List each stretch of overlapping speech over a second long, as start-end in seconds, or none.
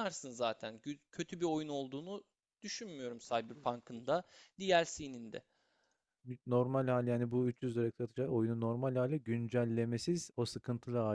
none